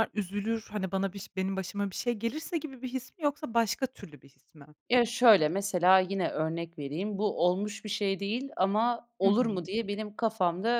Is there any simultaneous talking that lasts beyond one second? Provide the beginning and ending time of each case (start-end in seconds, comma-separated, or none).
none